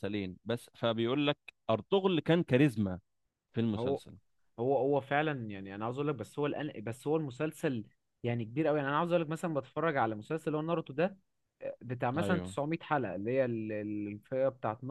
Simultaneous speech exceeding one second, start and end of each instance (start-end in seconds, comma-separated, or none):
none